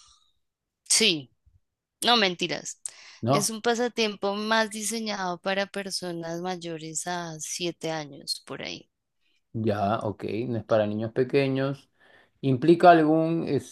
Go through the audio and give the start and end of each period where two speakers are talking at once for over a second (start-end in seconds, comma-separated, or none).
none